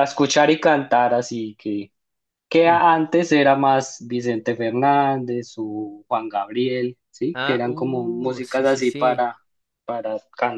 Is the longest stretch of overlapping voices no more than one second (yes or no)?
no